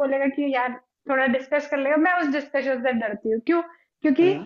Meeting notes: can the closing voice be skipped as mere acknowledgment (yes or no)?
yes